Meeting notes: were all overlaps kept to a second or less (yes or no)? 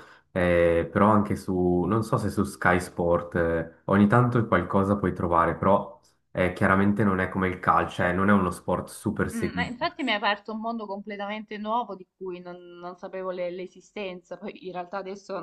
yes